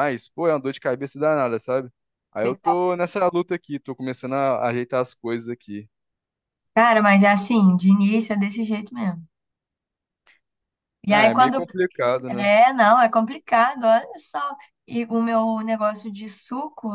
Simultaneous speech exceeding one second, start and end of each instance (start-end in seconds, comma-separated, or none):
none